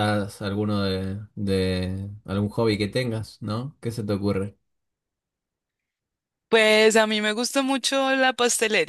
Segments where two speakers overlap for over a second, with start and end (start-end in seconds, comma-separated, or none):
none